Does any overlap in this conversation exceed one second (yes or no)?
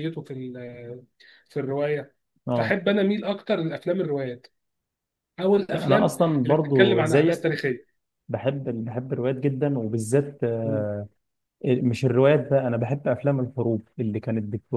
yes